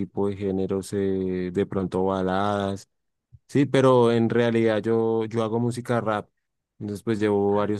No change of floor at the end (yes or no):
yes